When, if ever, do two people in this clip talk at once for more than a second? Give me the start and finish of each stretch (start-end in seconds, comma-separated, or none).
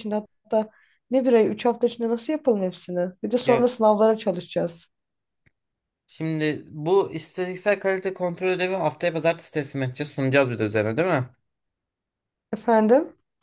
none